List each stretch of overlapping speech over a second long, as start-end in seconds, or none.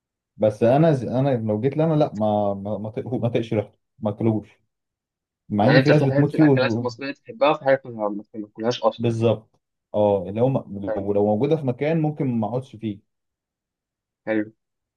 5.6-6.9